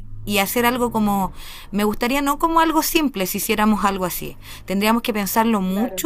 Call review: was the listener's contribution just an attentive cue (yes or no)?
yes